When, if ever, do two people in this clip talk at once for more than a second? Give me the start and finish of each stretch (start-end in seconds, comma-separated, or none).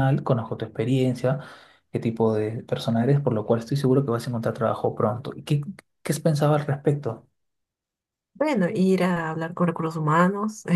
none